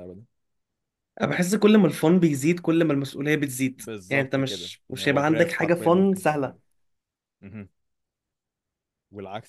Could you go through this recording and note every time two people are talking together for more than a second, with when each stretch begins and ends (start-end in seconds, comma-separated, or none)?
3.8-6.6